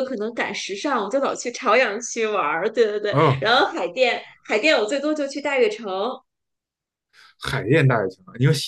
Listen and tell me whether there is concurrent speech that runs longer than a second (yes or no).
no